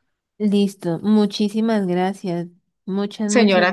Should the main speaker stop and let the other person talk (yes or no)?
yes